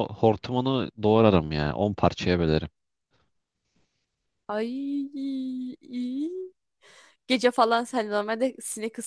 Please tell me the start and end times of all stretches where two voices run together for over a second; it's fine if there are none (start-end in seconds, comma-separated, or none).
none